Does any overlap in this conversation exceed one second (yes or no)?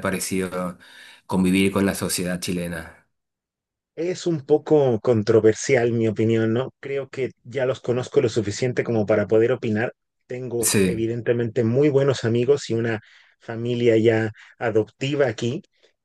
no